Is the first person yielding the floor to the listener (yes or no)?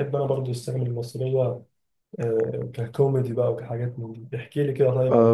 yes